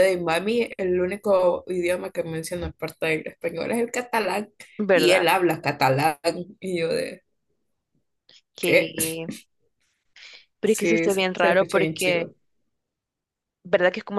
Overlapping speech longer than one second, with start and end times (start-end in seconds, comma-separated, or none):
10.6-12.3